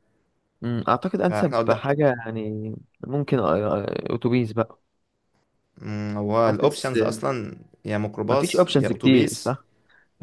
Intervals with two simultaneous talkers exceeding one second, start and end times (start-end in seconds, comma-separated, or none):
8.3-9.6